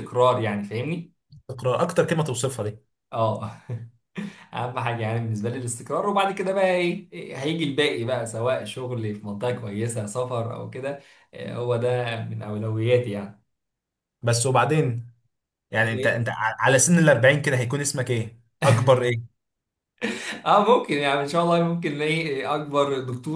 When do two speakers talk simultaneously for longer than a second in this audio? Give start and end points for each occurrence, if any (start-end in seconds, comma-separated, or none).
none